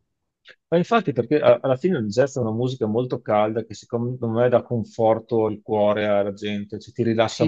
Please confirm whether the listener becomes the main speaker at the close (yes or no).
yes